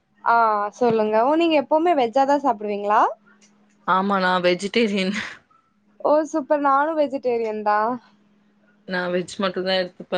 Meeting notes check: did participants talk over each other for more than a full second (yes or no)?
no